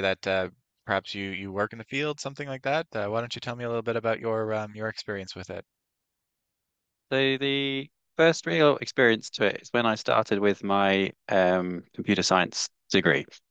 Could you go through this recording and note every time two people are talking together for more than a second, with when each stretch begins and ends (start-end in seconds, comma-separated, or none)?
none